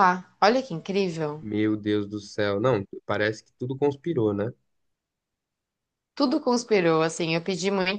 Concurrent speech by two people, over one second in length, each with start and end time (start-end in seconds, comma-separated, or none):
none